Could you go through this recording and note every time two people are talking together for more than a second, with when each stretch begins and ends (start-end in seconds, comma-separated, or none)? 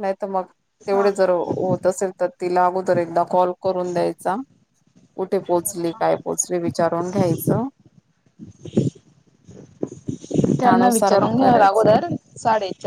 10.6-12.0